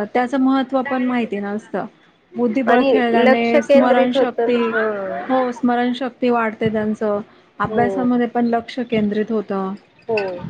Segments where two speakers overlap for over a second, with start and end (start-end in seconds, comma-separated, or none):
2.7-4.6